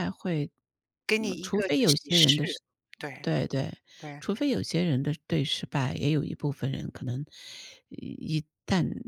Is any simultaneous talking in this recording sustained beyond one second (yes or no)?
yes